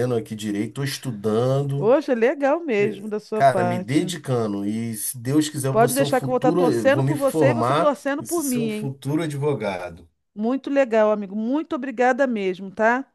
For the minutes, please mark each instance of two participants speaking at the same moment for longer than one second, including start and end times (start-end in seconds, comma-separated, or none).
2.8-4.1, 5.7-8.9